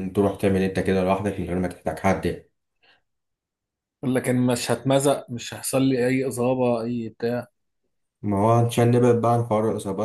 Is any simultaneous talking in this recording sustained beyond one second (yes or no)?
no